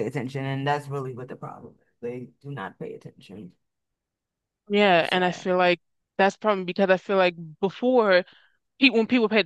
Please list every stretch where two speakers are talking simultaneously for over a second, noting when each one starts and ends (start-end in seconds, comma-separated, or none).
none